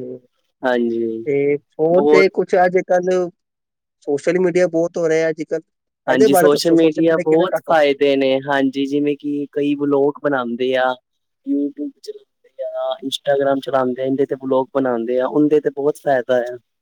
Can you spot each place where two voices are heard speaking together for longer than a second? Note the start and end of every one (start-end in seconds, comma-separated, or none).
none